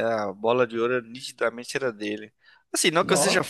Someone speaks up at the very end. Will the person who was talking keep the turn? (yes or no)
yes